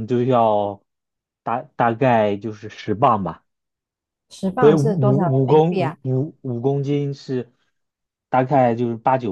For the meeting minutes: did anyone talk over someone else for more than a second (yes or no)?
yes